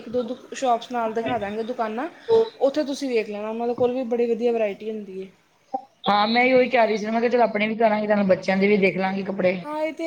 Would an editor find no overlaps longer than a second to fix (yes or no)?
yes